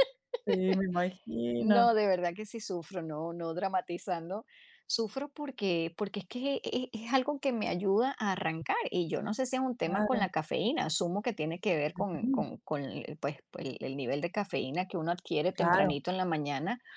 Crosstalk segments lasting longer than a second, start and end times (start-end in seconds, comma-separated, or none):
none